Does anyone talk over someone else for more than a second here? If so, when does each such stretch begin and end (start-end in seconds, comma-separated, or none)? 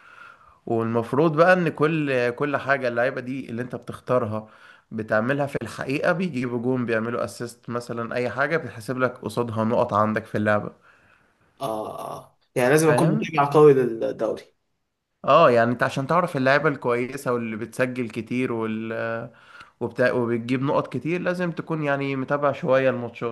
none